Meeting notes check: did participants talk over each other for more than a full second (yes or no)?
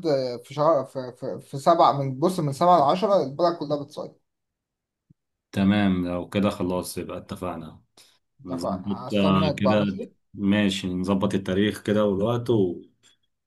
yes